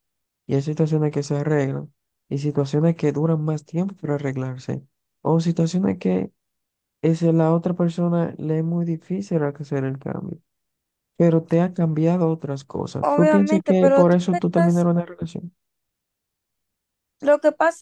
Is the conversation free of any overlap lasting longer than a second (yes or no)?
no